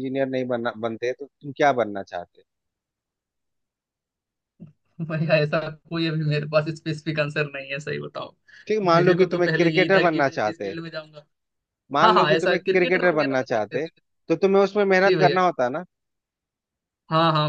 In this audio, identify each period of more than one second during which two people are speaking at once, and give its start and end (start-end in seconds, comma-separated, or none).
8.9-10.7, 12.0-13.9